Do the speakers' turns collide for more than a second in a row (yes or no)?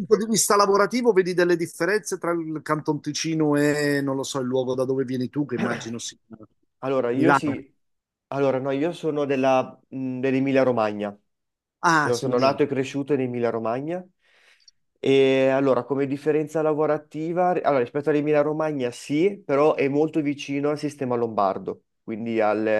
no